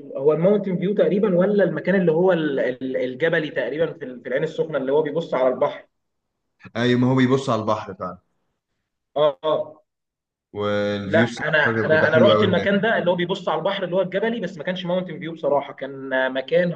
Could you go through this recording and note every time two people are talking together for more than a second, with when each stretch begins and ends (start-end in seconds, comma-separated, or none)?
11.1-12.7